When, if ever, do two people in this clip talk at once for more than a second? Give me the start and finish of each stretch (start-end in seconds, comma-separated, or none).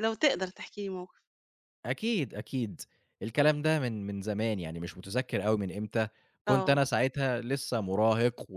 none